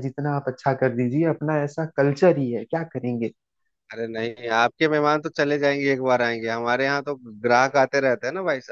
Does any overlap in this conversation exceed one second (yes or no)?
no